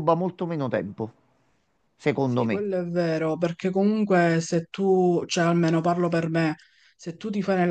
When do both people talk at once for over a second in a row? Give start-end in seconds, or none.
none